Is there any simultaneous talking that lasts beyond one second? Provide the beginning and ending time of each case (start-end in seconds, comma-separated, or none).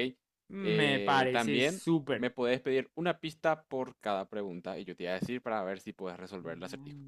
0.6-2.3